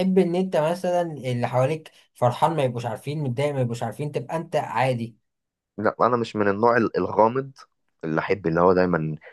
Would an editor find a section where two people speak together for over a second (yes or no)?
no